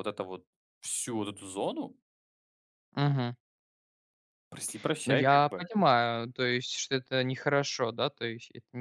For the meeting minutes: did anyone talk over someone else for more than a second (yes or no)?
no